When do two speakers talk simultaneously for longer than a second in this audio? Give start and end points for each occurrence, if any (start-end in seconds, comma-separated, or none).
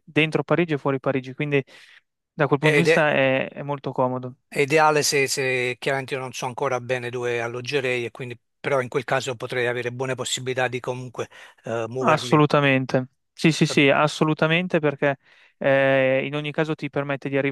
none